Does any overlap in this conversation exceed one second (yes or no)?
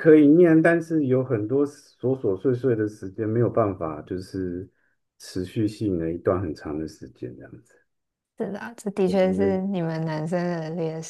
no